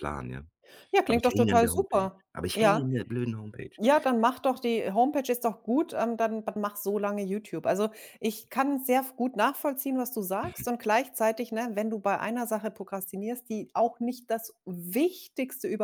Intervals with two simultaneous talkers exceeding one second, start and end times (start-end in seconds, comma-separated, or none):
1.1-2.9